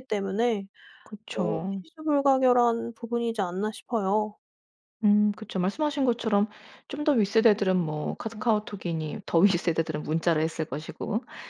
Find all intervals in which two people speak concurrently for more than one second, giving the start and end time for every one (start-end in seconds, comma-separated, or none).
none